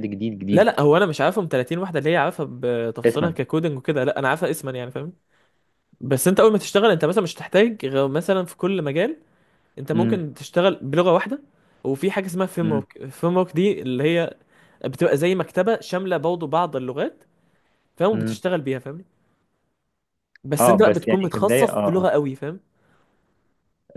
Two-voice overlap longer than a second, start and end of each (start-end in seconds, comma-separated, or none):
20.6-22.1